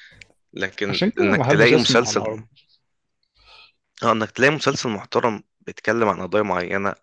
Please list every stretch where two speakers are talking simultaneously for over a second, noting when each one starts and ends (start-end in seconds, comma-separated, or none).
0.9-2.2